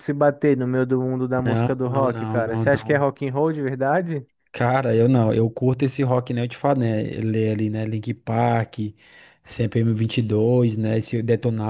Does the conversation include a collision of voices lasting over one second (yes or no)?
yes